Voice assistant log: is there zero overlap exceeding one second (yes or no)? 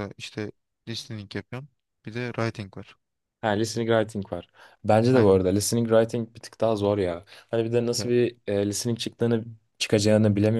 yes